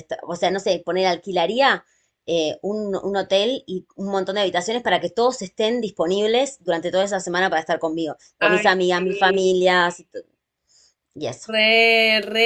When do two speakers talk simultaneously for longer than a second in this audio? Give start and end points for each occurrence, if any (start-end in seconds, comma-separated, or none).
8.4-9.7